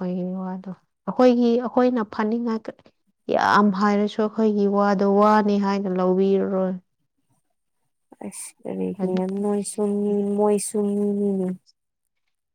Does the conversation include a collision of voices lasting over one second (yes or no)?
no